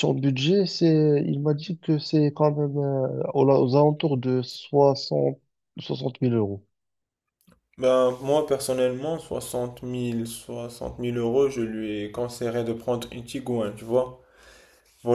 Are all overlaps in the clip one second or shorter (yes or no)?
yes